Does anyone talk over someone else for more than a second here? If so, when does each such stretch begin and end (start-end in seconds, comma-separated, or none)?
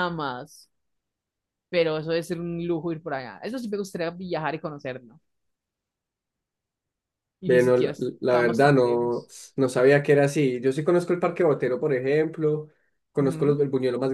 7.4-9.3